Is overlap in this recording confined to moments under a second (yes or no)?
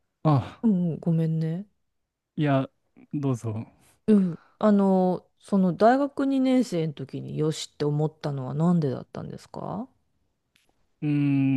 yes